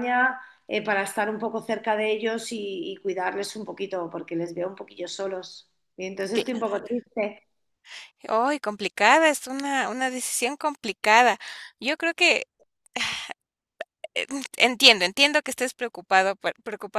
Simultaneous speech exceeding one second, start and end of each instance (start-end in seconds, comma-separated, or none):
none